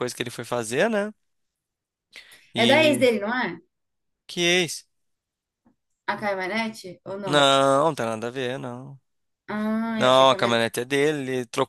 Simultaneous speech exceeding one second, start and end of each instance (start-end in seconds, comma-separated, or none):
none